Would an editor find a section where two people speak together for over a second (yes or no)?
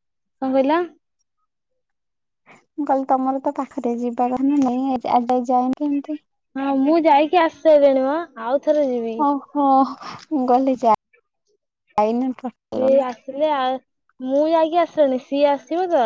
no